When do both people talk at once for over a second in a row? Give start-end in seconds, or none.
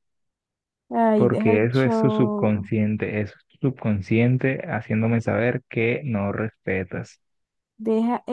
1.1-2.7